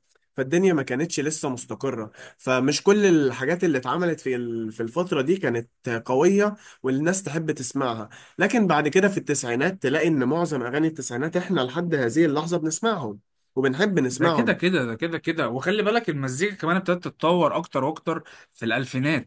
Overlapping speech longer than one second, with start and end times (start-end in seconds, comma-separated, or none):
none